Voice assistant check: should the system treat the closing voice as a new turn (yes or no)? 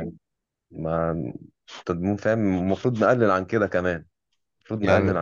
no